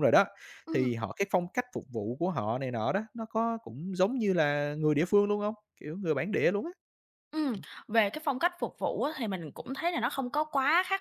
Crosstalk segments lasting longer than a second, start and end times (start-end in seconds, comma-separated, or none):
none